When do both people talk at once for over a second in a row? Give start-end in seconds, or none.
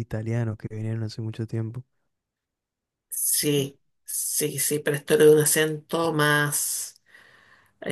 none